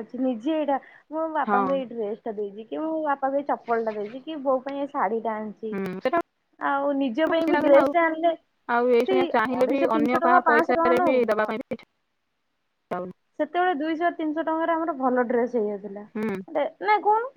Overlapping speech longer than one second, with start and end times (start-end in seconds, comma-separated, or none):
9.1-11.5